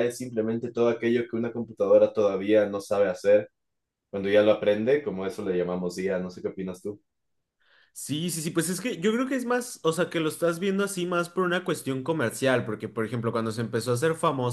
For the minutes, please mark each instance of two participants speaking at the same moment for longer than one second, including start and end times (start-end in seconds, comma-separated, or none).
none